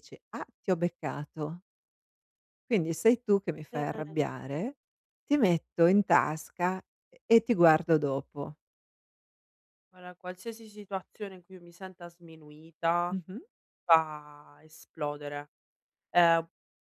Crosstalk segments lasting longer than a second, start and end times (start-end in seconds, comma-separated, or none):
none